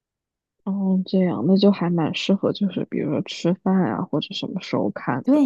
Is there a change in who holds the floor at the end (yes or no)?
yes